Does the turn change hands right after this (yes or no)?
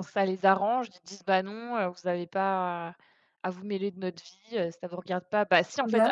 no